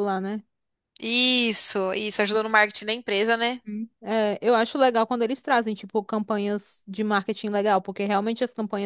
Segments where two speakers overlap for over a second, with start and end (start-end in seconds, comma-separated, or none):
none